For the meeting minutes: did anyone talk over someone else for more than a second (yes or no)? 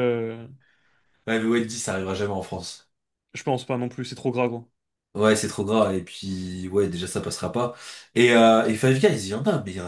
no